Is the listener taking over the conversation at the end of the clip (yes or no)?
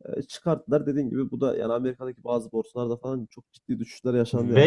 yes